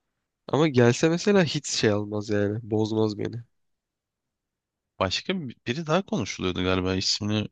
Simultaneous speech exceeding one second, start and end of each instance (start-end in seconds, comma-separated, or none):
none